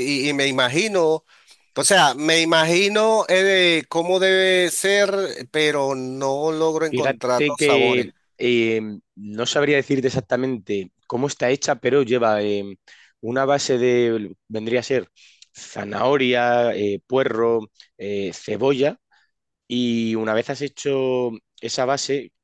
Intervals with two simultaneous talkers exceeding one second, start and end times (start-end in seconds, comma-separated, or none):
6.9-8.1